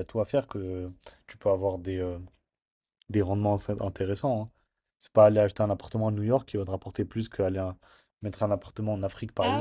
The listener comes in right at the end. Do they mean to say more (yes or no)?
yes